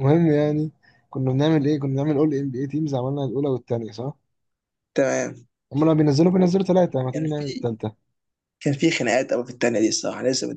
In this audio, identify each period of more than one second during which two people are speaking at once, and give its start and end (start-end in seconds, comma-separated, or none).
none